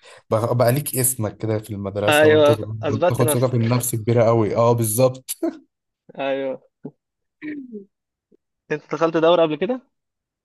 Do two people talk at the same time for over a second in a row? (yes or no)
yes